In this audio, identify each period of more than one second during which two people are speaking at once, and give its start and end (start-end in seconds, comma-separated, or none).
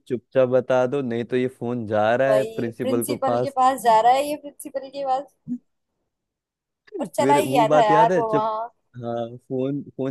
2.3-3.6, 7.2-8.5